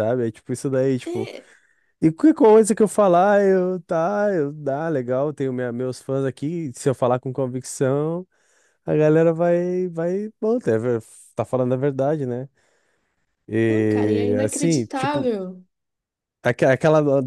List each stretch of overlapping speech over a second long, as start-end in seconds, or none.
13.7-15.3